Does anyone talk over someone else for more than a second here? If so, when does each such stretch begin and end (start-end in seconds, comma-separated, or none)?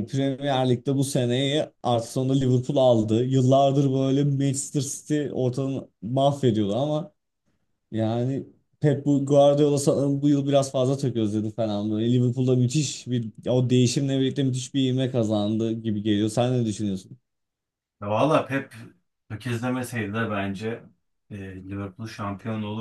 none